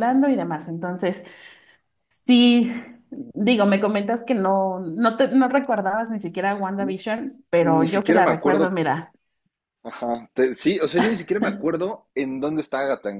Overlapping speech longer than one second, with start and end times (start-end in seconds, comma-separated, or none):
7.6-8.8